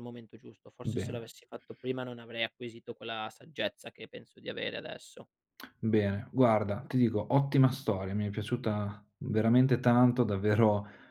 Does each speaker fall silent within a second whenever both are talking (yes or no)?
yes